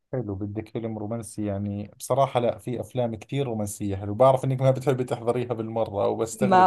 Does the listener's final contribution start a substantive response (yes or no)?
yes